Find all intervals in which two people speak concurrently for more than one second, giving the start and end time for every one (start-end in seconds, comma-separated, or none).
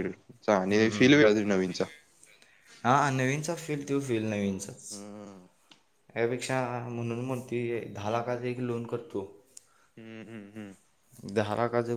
none